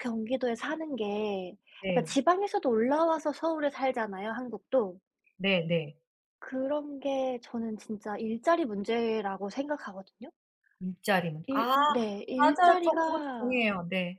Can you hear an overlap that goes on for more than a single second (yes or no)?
yes